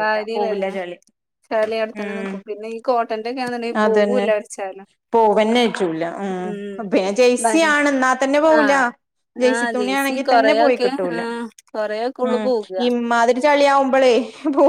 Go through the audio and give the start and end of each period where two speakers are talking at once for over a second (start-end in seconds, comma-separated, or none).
9.5-11.2